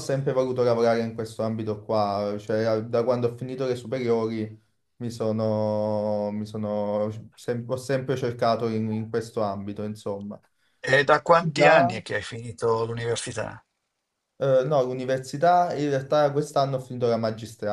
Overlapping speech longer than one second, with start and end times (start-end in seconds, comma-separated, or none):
none